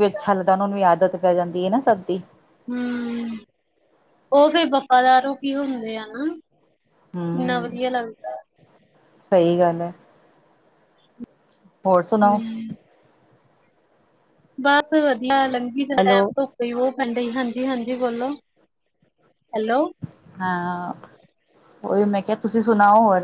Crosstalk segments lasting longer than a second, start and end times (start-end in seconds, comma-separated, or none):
none